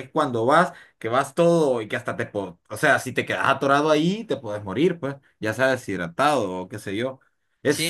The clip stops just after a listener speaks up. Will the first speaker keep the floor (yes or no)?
no